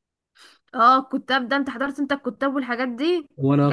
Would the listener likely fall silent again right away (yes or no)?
yes